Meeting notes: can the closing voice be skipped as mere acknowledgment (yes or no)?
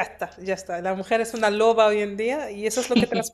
yes